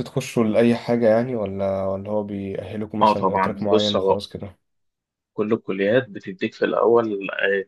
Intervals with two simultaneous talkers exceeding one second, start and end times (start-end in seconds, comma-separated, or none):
3.0-4.2